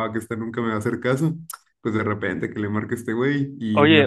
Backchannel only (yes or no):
no